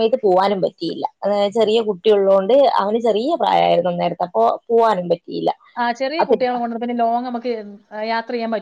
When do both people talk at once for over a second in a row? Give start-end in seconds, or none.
none